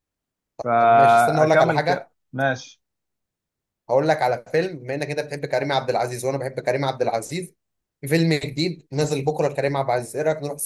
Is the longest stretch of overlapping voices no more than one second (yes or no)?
no